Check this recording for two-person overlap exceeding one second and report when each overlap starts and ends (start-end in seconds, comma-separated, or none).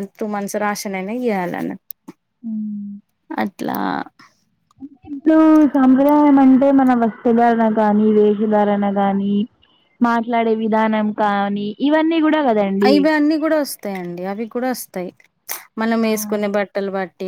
none